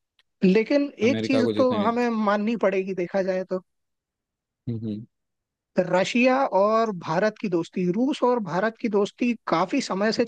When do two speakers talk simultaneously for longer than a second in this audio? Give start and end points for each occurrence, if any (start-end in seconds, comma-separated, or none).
0.7-2.1